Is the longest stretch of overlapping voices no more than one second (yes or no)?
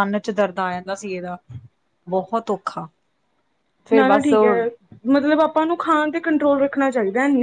yes